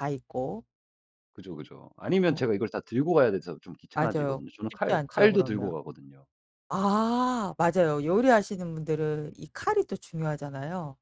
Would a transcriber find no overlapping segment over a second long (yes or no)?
no